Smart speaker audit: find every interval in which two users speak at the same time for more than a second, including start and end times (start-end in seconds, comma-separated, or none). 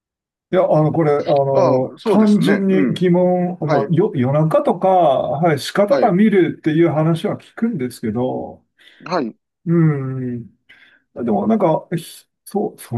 1.5-3.0